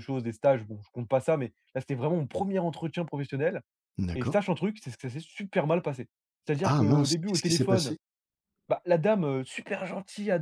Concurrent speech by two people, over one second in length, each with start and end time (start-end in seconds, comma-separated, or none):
6.6-7.9